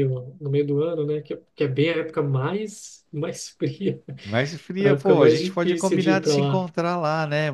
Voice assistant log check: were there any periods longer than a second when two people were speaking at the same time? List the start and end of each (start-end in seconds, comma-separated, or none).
4.8-6.7